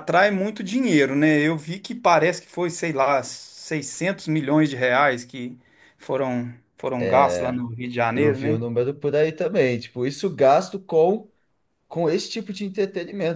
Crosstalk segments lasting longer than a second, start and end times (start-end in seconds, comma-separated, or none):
none